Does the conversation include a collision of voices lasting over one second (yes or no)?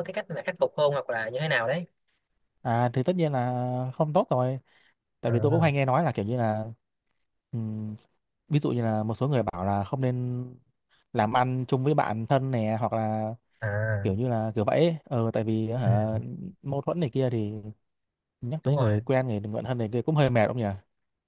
no